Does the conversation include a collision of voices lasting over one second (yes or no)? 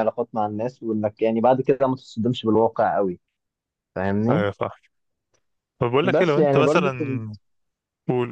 yes